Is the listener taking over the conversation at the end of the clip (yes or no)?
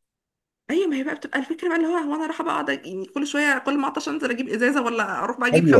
yes